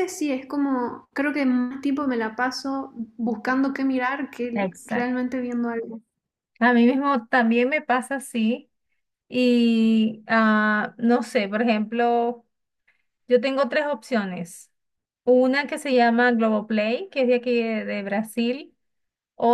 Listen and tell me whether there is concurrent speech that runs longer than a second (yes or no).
no